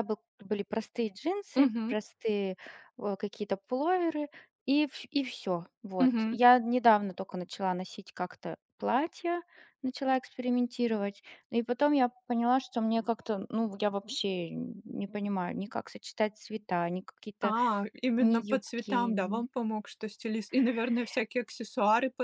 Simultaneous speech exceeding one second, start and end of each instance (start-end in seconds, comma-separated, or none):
18.2-19.5